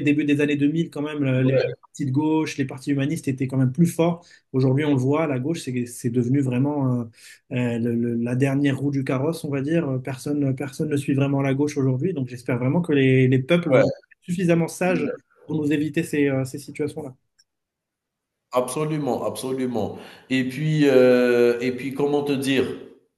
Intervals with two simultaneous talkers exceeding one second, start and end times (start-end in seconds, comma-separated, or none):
none